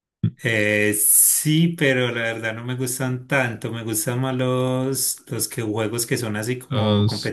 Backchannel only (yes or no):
yes